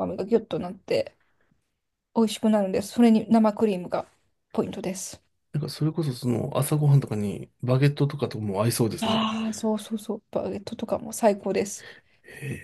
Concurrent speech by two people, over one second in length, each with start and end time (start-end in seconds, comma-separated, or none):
none